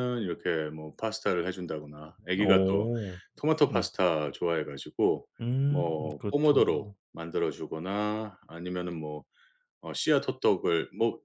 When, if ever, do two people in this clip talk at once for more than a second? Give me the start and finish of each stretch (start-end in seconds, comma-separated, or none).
5.7-6.9